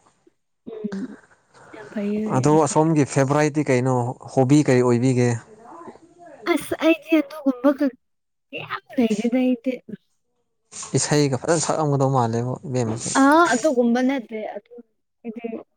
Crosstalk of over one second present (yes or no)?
no